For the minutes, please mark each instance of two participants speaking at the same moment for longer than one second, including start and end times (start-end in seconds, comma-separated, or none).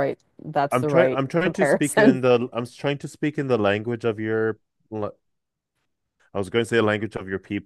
0.7-2.2